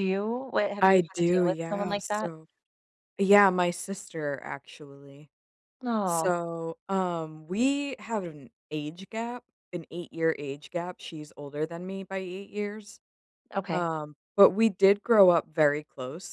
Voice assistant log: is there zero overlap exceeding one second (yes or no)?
no